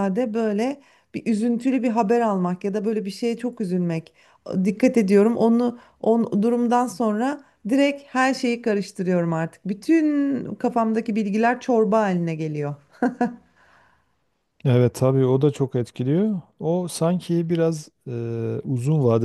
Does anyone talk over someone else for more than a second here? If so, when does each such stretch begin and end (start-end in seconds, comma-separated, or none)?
none